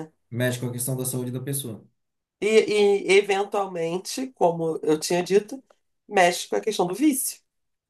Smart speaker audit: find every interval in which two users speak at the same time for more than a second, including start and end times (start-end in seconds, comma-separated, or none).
none